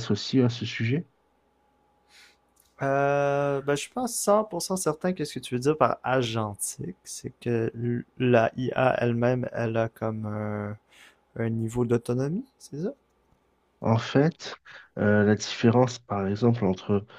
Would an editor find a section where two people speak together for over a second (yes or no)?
no